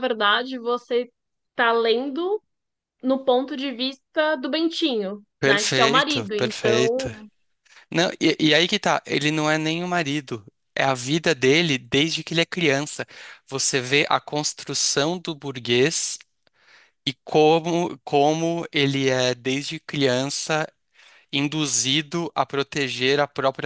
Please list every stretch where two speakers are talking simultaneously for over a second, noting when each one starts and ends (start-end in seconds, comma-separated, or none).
5.4-7.1